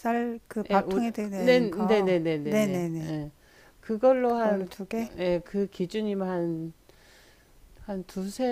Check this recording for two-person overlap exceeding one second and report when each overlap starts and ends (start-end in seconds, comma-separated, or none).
0.7-3.2